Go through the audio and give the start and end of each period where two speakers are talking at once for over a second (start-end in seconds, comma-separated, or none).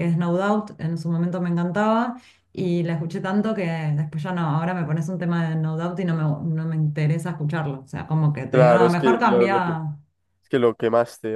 8.5-9.7